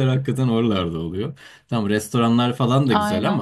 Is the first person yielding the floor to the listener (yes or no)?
no